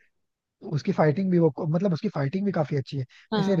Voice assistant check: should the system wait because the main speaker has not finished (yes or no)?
yes